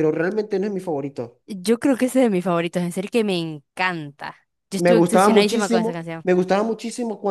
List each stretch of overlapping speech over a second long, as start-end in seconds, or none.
4.8-6.3